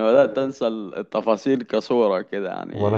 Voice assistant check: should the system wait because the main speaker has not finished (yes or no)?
yes